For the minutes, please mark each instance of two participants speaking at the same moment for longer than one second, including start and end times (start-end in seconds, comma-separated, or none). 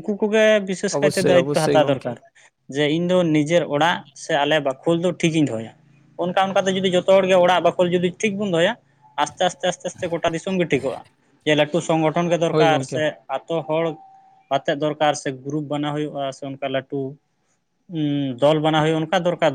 0.9-2.1